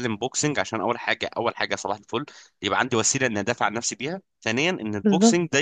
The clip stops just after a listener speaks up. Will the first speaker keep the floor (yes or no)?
yes